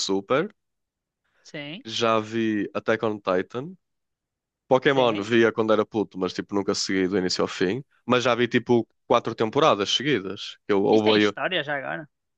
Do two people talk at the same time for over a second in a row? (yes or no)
no